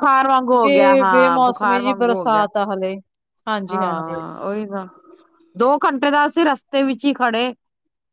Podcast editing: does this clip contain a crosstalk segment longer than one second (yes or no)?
yes